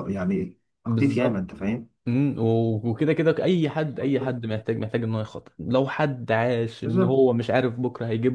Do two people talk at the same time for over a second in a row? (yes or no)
no